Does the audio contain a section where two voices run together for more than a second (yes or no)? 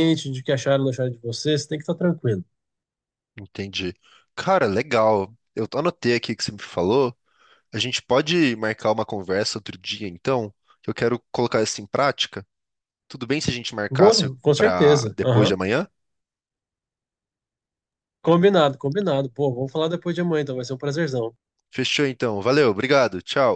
yes